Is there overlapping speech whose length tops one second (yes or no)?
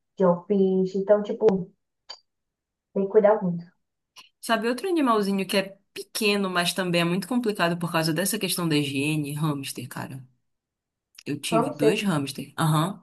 no